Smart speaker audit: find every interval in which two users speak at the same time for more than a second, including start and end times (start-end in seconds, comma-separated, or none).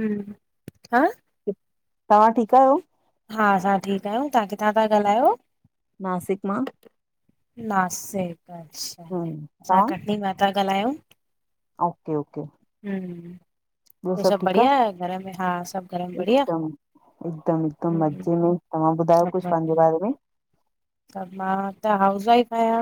none